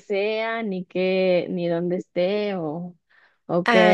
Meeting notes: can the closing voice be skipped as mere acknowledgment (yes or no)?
yes